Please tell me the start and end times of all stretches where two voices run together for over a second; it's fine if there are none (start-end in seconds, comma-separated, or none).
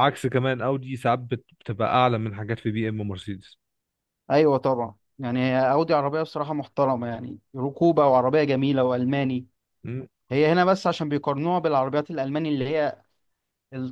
none